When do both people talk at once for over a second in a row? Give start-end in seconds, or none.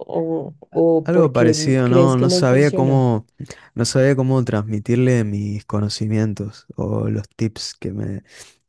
1.0-3.1